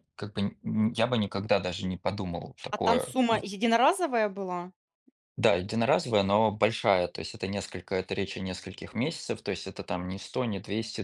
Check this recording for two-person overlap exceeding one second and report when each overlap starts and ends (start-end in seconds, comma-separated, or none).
none